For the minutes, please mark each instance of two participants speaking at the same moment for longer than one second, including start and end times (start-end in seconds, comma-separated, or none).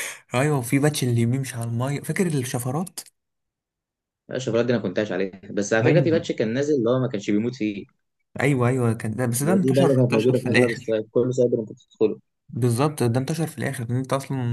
9.4-11.0